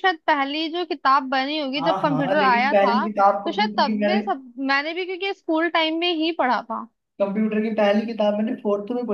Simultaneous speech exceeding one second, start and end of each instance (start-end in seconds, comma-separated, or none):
1.8-4.2